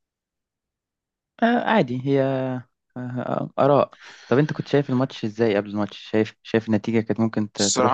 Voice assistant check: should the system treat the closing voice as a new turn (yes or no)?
yes